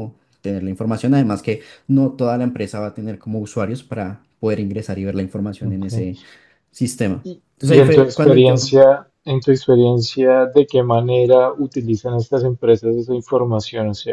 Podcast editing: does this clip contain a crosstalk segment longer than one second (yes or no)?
yes